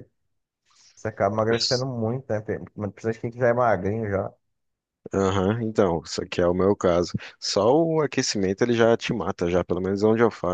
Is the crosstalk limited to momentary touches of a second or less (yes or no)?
yes